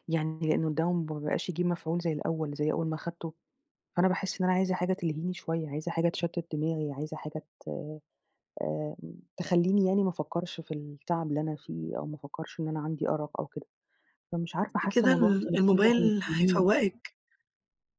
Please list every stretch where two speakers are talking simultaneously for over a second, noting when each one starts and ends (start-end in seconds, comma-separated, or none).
14.7-16.7